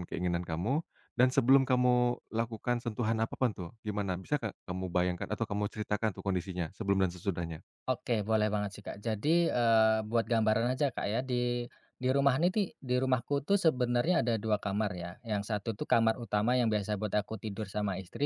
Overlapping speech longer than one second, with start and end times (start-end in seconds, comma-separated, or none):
none